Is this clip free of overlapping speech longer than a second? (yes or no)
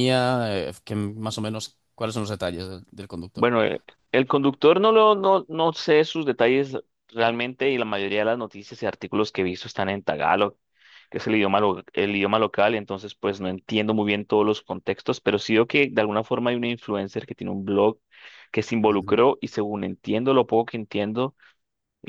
yes